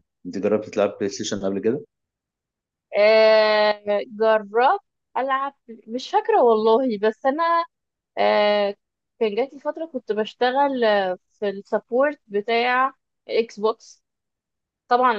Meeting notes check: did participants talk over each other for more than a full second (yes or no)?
no